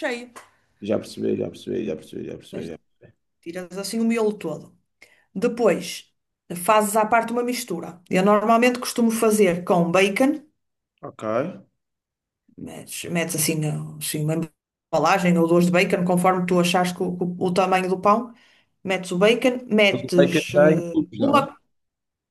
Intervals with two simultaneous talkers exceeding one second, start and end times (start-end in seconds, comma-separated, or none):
19.9-21.5